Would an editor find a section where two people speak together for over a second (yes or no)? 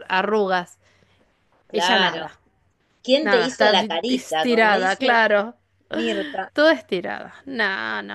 yes